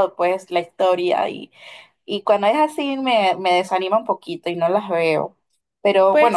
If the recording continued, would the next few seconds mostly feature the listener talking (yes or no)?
no